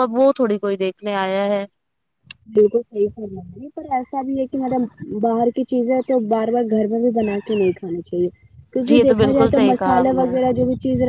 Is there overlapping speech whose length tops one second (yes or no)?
yes